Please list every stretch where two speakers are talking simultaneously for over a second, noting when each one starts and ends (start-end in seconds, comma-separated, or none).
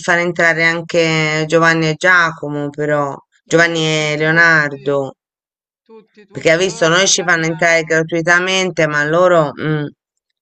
3.5-5.0, 6.3-8.0